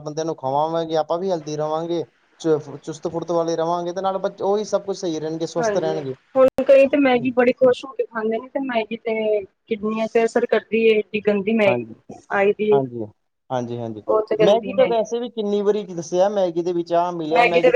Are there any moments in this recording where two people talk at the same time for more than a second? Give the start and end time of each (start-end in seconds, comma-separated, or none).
none